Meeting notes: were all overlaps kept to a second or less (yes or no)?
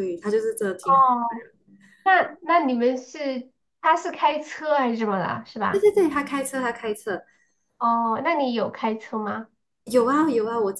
yes